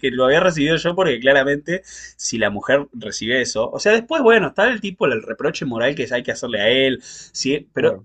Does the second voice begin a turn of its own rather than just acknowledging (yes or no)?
no